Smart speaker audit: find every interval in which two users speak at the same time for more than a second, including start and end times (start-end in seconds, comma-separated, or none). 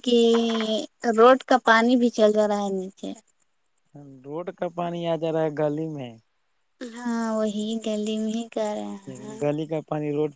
none